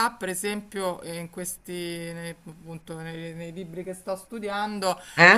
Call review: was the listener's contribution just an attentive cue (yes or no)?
yes